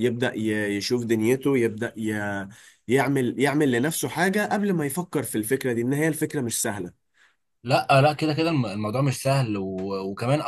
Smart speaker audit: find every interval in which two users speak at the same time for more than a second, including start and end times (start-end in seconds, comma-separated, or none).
none